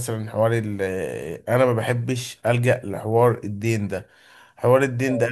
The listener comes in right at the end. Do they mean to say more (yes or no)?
no